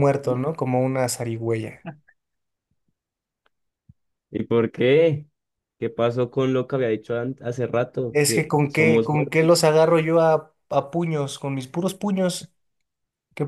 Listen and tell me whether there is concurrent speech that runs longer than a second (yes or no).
yes